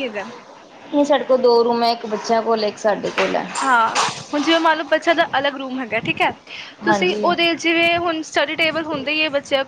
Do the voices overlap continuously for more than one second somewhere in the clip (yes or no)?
no